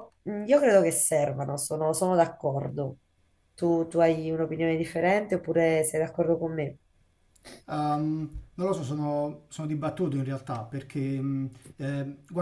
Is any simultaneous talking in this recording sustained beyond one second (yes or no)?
no